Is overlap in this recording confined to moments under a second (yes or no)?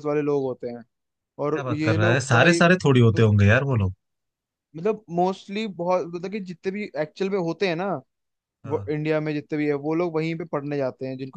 no